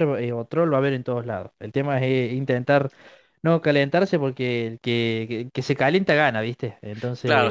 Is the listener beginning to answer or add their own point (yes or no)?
yes